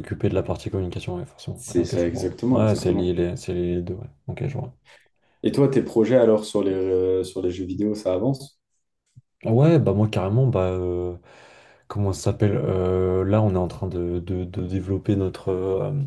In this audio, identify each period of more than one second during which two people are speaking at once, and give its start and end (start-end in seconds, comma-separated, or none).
1.5-3.1